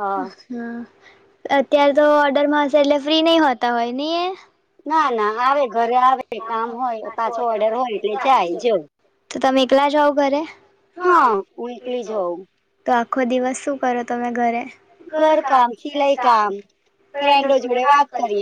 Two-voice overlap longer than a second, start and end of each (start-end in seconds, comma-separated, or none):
none